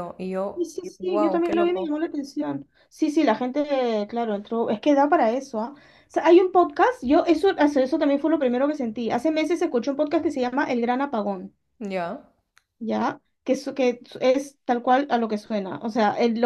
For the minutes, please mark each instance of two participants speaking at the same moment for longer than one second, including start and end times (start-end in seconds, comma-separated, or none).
0.5-1.9